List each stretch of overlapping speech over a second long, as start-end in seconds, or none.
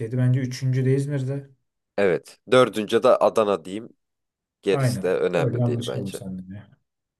4.7-6.2